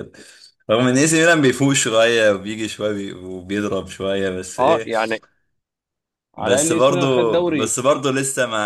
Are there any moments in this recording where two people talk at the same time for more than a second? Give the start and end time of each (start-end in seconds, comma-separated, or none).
6.4-7.7